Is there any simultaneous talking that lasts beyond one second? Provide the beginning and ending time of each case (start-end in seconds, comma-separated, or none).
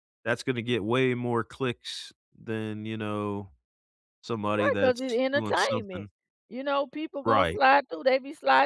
4.6-6.1